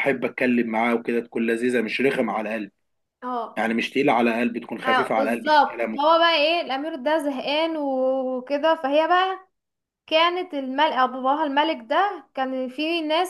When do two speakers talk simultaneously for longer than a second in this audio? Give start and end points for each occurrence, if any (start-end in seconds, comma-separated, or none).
4.8-6.2